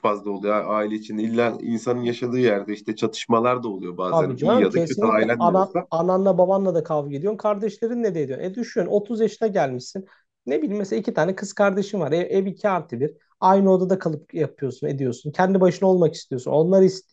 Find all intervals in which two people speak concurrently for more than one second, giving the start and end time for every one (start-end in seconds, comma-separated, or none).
4.0-5.9